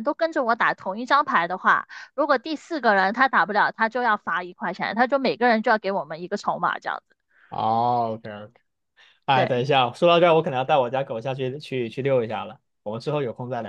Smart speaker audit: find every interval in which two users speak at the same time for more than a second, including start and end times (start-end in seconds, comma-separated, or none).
none